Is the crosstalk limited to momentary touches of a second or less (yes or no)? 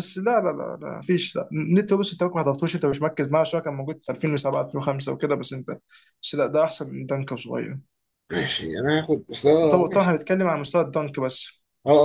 yes